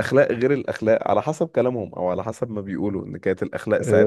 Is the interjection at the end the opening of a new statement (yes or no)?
yes